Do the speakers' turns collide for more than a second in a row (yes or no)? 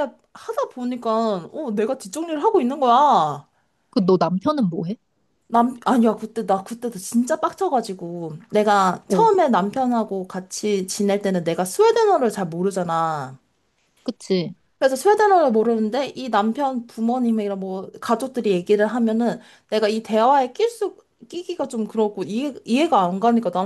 no